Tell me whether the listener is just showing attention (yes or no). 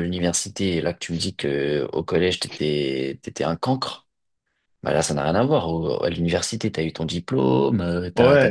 no